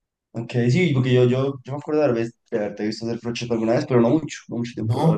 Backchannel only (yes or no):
no